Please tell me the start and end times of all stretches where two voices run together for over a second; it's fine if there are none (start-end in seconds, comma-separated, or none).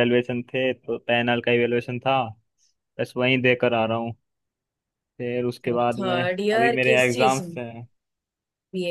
6.0-7.6